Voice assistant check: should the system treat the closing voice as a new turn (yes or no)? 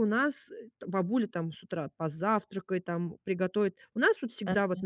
no